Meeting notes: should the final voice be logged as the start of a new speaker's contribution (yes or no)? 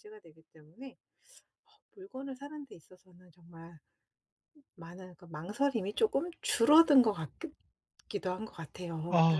yes